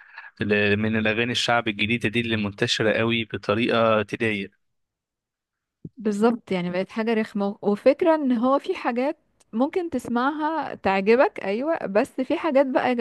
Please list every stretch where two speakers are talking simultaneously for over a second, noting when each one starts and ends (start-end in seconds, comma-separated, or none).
none